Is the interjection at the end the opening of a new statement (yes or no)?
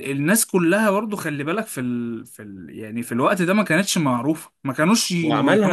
yes